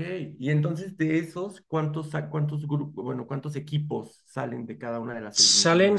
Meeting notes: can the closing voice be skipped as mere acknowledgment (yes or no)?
no